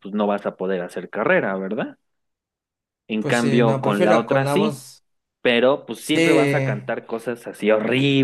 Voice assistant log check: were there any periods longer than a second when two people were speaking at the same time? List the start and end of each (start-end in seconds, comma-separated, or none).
3.2-4.8